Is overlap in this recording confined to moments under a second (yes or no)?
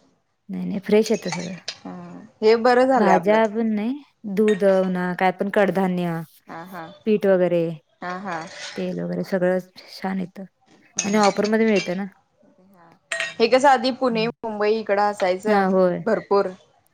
yes